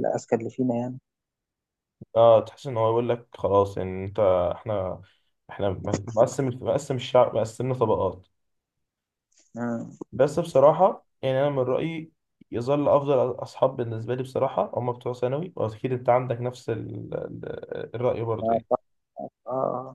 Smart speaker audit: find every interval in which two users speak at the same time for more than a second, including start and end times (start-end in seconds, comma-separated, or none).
none